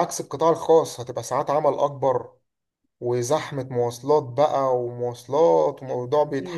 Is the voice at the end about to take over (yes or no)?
yes